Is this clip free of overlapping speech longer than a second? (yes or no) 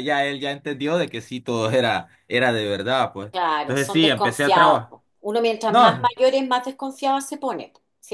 no